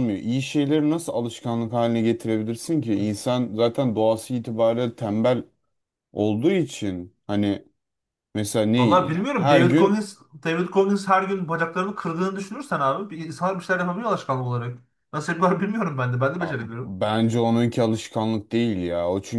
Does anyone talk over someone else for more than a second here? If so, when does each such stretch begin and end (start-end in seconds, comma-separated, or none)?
8.8-10.0